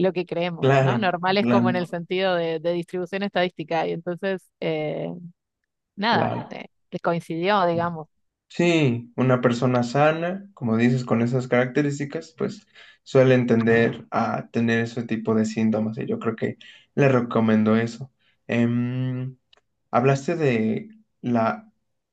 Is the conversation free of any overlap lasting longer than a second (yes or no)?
no